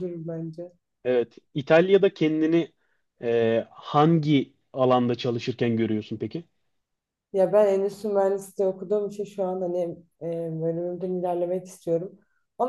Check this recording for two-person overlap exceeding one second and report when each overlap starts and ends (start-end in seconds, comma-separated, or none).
none